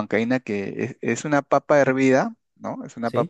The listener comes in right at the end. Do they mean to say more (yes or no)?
no